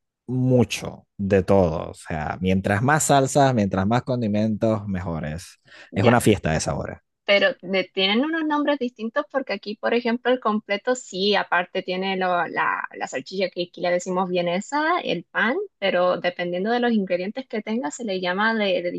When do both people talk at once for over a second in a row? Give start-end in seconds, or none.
none